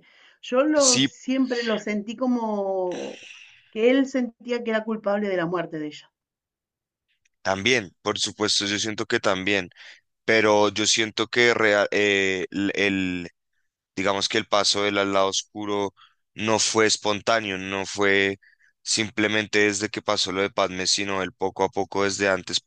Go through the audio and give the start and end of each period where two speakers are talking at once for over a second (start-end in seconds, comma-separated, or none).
none